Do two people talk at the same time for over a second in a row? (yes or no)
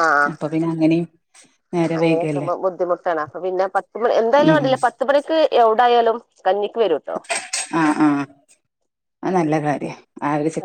no